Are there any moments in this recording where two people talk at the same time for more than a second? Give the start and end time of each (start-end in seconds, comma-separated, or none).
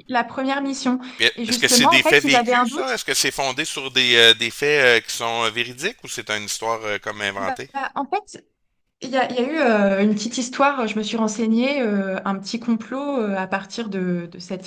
1.2-3.0